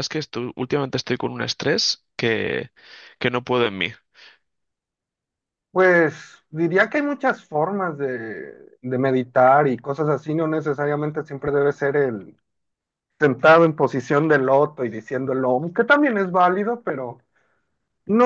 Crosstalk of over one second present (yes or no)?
no